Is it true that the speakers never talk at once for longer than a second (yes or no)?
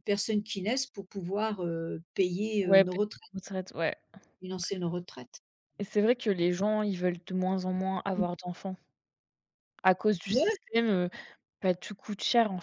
yes